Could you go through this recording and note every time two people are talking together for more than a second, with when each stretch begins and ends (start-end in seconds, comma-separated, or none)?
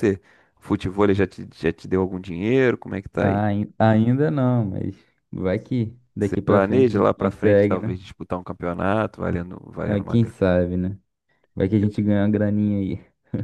6.2-8.0